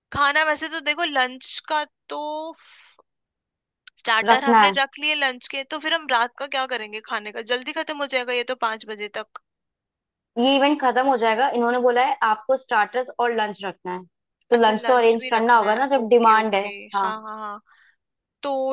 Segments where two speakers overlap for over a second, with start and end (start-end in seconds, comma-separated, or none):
14.5-17.1